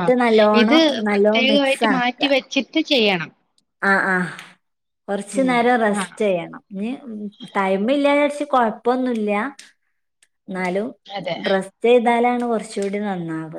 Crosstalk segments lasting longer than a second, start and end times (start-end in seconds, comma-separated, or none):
0.6-2.2